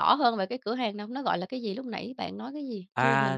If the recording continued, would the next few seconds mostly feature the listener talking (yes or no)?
yes